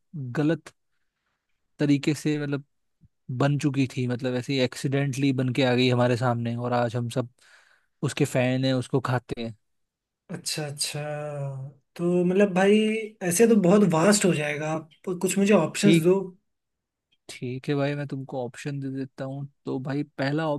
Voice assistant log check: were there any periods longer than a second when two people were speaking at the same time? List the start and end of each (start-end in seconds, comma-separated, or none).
none